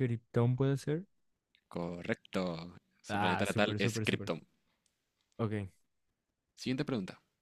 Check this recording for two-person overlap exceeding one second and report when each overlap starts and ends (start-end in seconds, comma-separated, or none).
3.1-4.3